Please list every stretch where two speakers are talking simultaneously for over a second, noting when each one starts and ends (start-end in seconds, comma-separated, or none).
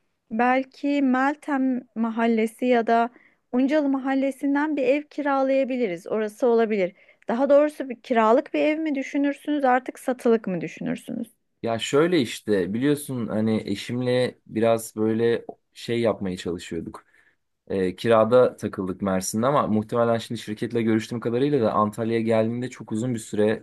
none